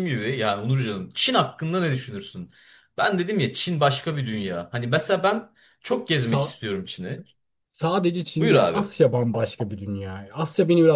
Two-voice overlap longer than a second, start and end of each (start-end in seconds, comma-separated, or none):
none